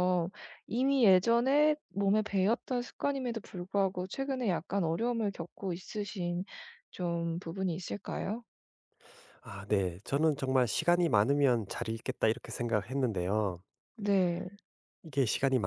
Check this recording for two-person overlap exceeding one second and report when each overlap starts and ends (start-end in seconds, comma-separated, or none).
none